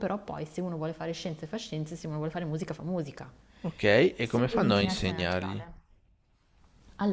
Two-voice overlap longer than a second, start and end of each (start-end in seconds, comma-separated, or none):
4.2-5.6